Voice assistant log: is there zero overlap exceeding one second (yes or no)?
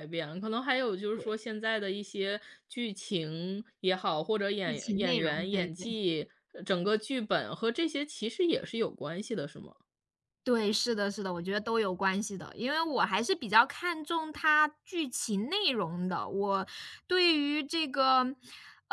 no